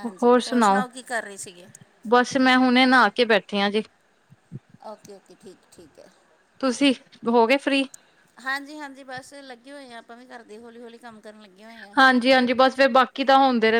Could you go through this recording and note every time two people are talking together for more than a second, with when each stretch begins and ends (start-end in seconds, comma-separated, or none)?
none